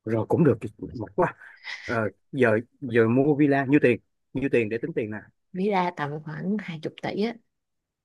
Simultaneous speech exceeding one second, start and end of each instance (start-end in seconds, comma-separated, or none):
none